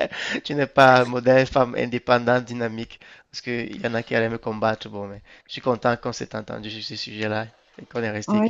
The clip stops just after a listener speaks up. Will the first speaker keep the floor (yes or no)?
no